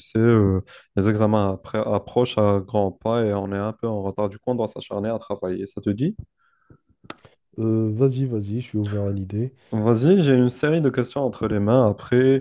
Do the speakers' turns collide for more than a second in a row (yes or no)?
no